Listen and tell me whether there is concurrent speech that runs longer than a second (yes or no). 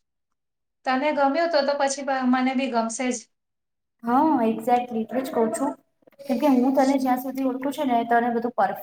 no